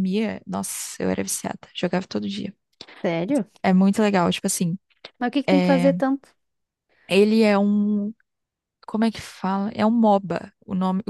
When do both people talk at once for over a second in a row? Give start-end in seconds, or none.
none